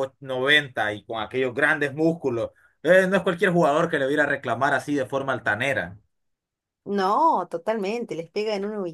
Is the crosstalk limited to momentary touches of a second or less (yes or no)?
yes